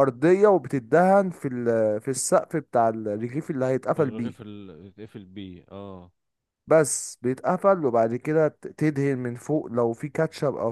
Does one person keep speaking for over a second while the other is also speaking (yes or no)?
no